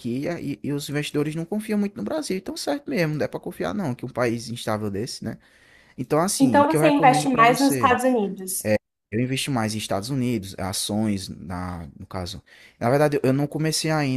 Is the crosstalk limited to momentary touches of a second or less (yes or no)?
no